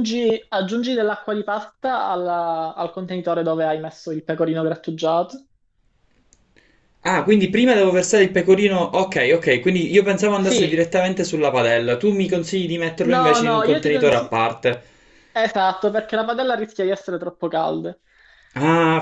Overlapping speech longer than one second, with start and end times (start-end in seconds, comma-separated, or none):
13.1-14.3